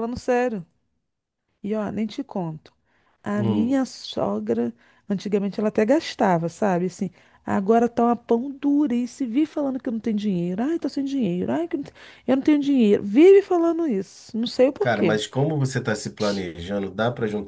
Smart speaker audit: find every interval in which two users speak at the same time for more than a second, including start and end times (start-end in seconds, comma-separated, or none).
none